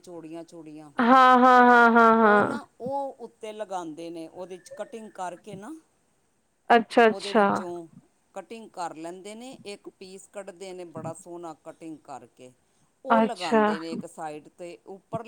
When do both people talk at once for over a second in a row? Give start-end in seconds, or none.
none